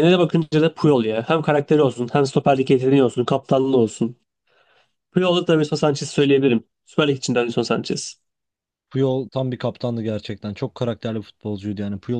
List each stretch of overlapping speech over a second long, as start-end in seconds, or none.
none